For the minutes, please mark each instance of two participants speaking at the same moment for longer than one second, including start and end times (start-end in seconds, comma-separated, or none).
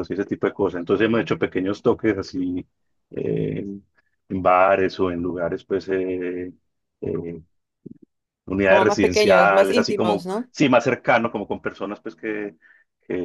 8.7-10.5